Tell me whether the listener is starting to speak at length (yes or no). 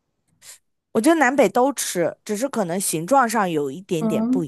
yes